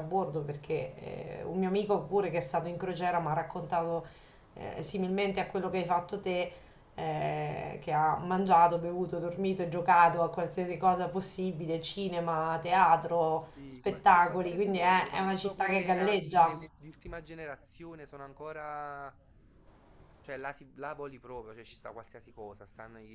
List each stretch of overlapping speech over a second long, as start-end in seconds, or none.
13.5-16.6